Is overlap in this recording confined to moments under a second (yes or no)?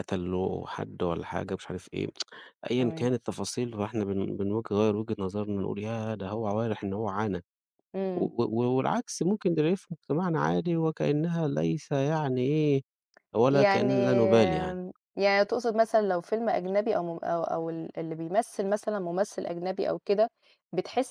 no